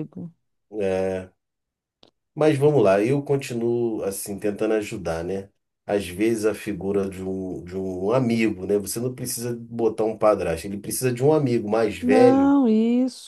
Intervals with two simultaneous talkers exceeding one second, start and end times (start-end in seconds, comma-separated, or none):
none